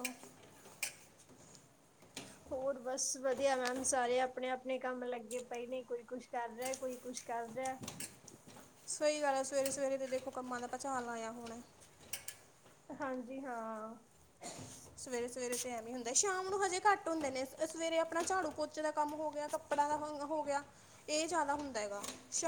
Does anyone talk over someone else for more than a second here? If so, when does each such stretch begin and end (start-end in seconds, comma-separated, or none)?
none